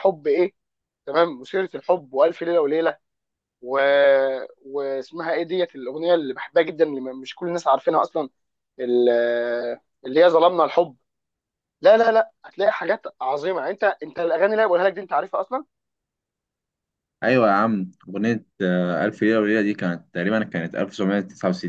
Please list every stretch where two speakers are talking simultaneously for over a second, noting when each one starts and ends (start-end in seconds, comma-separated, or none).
none